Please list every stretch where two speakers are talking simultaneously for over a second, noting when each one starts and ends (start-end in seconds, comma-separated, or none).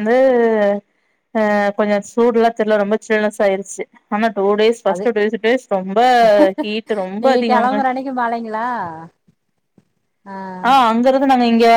none